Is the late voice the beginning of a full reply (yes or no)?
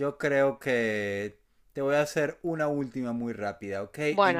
no